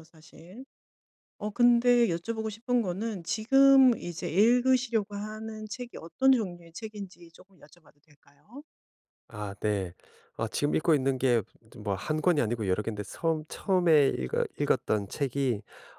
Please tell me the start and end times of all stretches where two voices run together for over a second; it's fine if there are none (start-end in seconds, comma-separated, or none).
none